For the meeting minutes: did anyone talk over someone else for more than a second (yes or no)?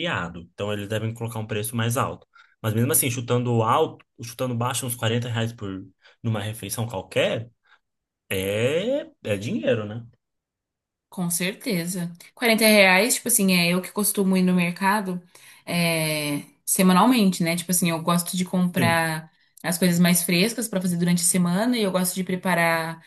no